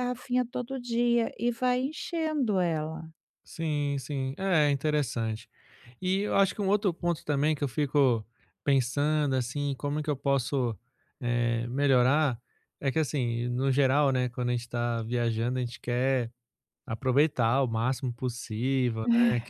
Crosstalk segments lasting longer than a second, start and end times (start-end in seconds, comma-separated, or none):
none